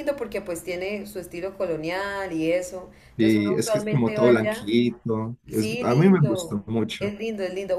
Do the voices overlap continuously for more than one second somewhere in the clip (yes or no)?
yes